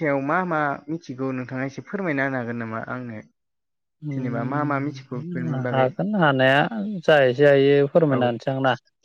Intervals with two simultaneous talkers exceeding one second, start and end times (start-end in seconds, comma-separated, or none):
4.1-5.9